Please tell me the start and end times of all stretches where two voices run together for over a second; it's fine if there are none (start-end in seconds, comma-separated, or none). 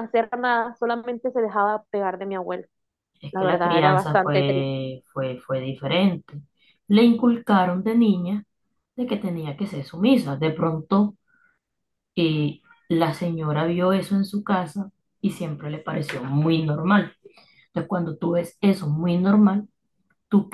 3.3-4.7